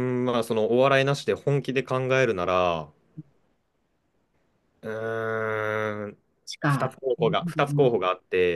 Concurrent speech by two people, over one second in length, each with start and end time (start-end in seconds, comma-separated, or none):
6.7-8.0